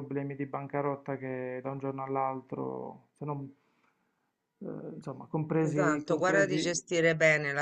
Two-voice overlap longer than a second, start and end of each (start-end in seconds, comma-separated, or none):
5.6-6.8